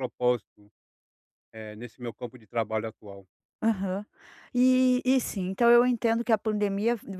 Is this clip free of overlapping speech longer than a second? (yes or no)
yes